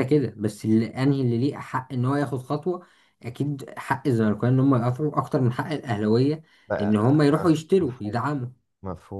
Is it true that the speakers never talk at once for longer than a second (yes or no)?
no